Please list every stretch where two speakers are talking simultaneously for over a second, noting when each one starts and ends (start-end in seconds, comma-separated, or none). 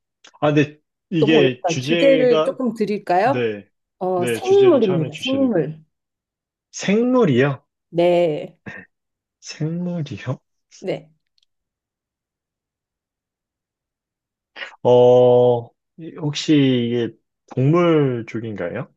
1.2-2.6, 4.2-5.5